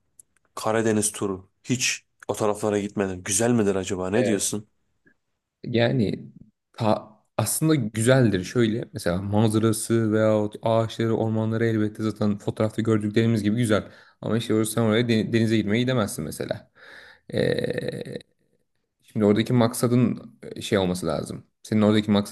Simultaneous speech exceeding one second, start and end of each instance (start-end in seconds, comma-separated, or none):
none